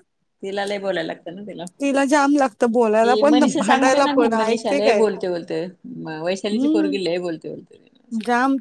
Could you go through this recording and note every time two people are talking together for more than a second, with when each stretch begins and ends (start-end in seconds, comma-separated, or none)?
3.0-5.1